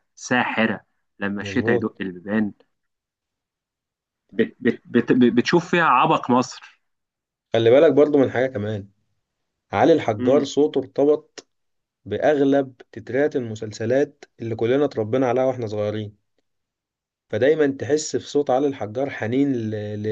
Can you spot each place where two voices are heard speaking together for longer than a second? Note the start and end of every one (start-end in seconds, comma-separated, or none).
none